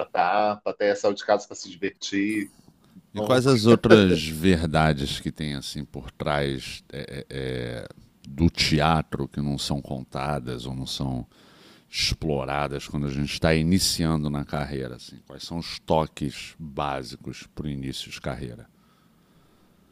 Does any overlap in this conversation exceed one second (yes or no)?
no